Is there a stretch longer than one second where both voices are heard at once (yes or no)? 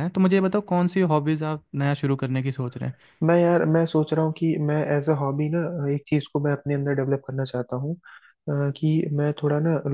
no